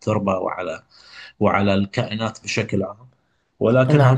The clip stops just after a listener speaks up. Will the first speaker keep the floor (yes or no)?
no